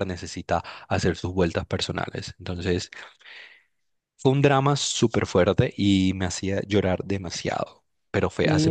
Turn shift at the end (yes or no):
yes